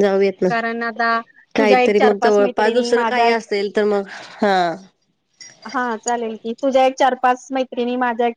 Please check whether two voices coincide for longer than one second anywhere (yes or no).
yes